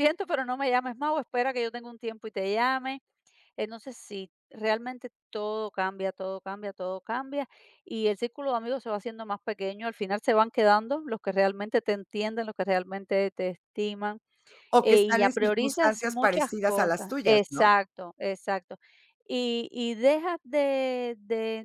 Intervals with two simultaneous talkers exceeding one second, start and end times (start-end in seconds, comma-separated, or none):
14.8-17.8